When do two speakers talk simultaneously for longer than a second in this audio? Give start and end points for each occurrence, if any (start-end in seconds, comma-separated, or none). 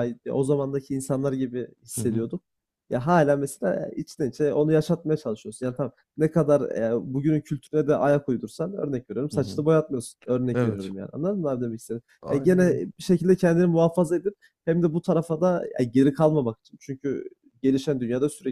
none